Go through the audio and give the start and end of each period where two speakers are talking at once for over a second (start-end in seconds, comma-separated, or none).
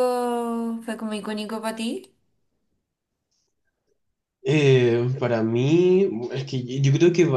none